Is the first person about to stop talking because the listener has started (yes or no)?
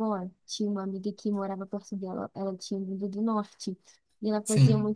no